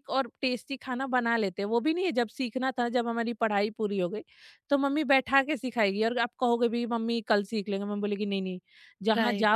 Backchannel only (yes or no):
no